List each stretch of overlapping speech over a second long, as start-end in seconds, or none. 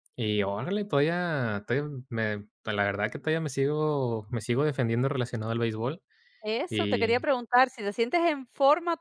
none